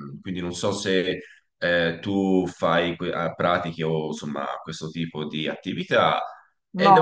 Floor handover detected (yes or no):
yes